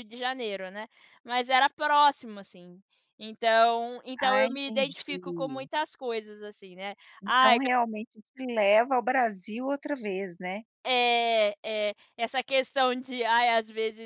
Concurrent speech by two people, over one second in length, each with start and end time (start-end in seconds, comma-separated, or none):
4.2-5.7